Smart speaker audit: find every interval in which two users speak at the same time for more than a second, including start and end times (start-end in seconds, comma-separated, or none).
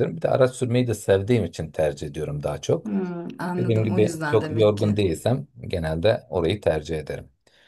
3.6-5.0